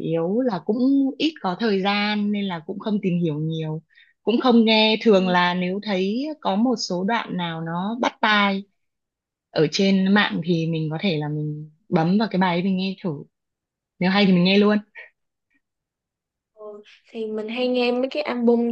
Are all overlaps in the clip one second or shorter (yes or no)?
yes